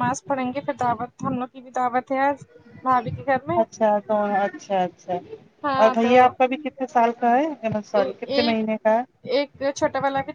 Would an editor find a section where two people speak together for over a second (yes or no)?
no